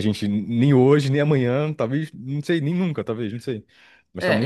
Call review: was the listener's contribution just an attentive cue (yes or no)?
no